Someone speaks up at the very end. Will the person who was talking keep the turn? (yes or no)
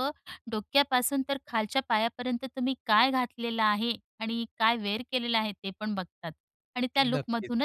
yes